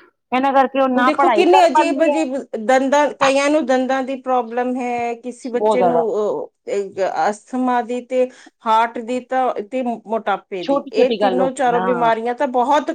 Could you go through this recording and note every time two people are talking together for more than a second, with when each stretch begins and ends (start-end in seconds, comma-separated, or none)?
10.7-12.1